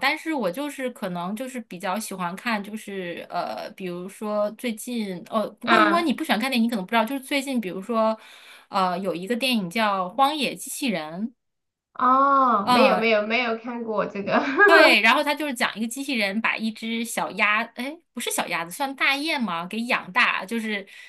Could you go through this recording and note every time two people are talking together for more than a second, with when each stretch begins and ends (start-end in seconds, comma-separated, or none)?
none